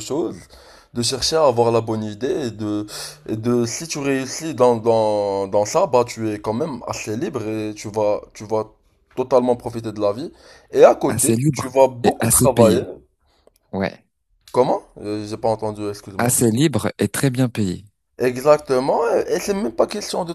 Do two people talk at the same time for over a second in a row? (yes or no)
yes